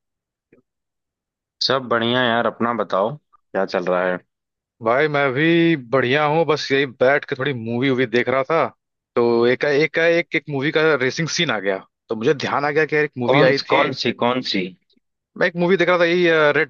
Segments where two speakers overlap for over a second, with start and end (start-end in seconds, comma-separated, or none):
none